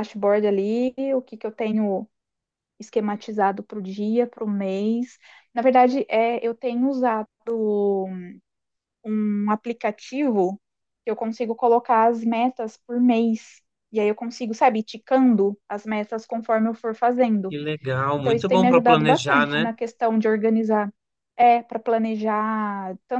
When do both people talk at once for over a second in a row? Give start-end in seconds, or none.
18.2-19.7